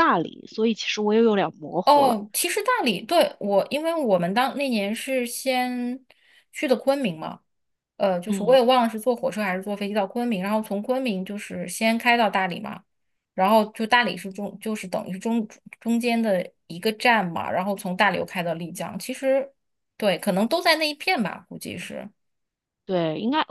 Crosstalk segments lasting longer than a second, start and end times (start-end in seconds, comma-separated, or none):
none